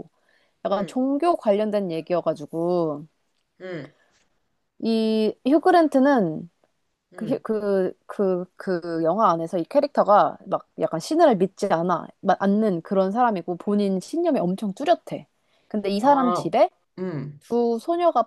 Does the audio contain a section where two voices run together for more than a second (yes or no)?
no